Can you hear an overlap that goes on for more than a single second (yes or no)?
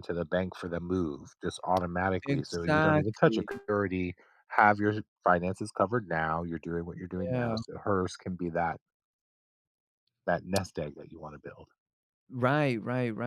yes